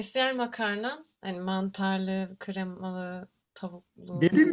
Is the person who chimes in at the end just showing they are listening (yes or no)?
no